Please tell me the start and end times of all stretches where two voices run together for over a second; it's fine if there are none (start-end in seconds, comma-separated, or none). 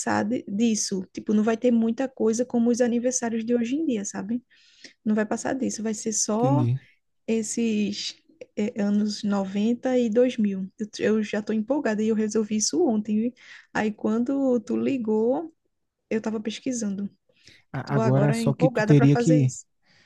17.7-19.5